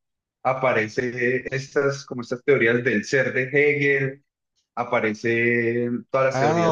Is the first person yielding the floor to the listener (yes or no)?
no